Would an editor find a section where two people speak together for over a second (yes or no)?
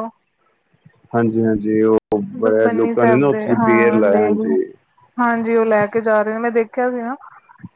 yes